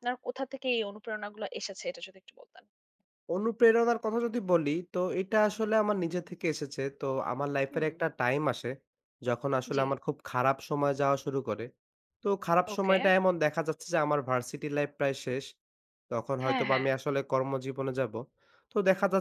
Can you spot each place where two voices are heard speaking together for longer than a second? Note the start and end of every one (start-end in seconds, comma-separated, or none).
none